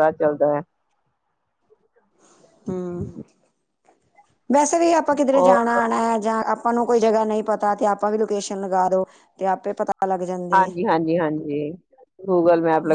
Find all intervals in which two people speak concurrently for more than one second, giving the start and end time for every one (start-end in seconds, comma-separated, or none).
none